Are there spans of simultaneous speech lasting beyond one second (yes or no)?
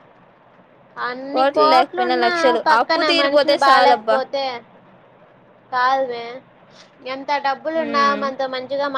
yes